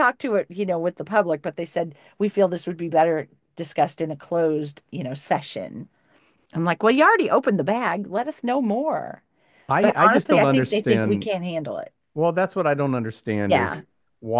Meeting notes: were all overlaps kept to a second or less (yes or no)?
no